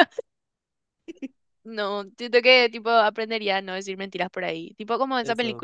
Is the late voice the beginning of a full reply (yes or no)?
no